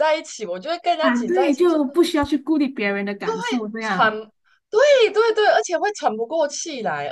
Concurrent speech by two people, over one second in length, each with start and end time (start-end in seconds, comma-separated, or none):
none